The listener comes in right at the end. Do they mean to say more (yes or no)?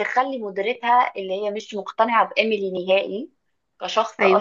no